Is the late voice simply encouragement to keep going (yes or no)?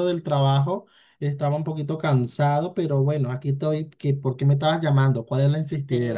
no